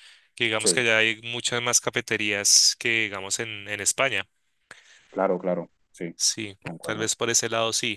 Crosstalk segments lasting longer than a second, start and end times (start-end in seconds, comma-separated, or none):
none